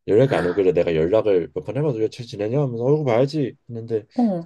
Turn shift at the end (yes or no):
no